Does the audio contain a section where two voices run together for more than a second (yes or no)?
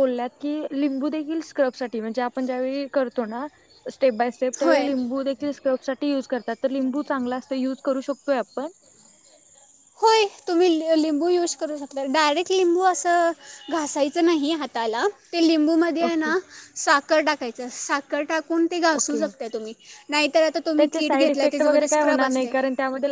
yes